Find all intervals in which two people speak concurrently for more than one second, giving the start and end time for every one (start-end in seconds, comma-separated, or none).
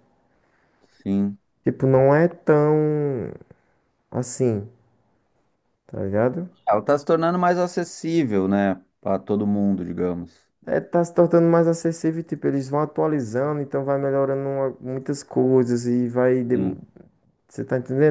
none